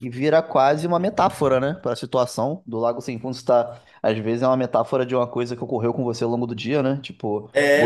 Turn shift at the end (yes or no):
yes